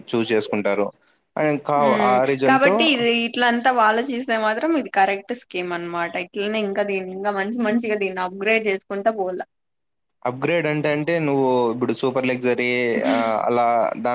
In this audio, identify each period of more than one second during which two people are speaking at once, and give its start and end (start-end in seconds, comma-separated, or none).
none